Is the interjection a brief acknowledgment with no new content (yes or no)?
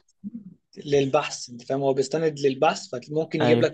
yes